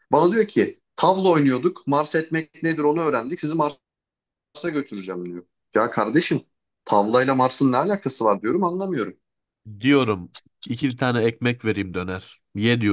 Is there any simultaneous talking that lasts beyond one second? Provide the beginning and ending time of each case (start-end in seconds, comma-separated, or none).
none